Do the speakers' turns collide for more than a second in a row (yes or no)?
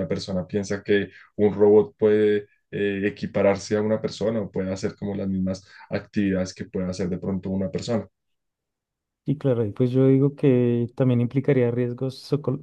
no